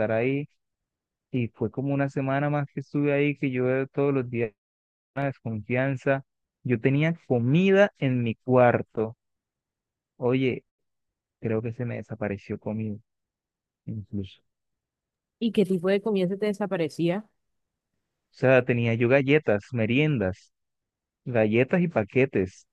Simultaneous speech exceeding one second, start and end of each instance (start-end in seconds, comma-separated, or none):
none